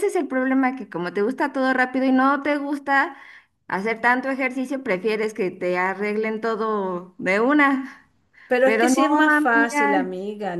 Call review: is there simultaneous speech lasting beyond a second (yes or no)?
yes